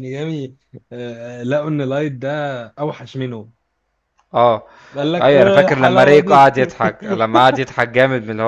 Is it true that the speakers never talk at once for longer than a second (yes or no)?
no